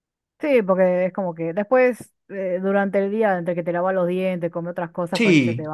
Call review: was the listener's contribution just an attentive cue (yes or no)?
no